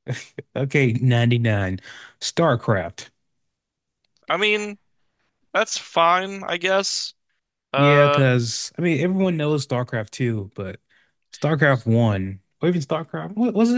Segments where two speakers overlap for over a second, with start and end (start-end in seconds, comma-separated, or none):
none